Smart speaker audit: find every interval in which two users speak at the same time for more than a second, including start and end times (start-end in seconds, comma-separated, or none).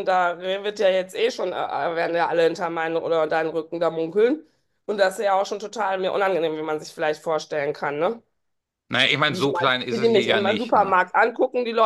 9.3-10.9